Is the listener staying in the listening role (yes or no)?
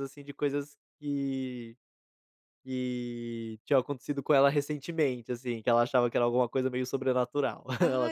no